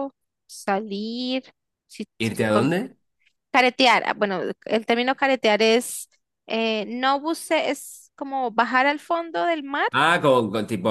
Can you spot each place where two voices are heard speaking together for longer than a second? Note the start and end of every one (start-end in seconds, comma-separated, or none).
none